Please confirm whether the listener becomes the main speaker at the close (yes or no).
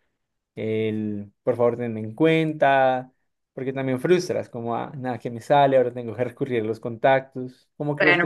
yes